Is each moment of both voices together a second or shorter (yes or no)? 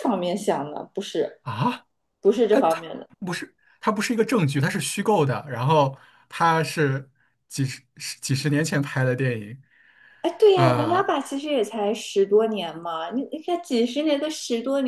yes